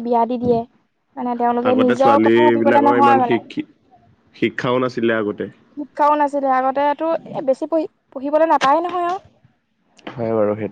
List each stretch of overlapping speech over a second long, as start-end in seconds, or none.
1.7-3.4